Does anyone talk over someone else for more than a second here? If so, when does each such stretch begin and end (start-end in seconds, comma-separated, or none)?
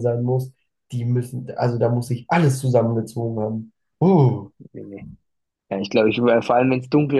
none